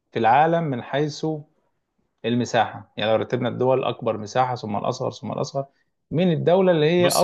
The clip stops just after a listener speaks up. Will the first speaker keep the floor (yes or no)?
yes